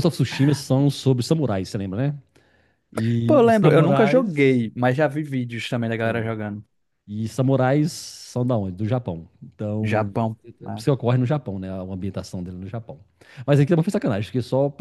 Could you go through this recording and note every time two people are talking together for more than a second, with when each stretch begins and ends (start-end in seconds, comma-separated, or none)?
3.3-4.6